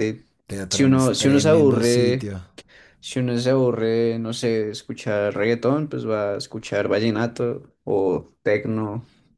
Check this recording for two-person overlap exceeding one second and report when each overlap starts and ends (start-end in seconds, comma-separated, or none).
0.7-2.3